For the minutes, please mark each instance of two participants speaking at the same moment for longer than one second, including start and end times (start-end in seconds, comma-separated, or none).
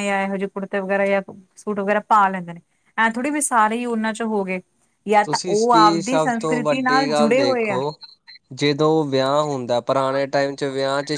5.2-7.8